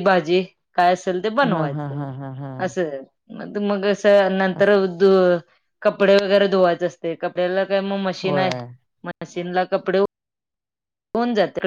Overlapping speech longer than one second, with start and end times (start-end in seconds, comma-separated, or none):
none